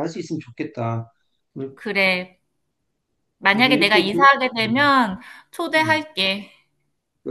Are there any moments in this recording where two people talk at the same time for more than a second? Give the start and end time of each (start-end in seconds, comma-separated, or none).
3.5-4.9